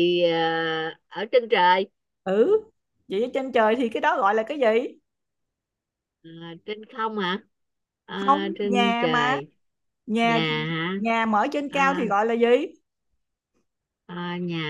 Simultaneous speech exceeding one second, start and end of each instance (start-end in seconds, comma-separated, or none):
8.2-9.4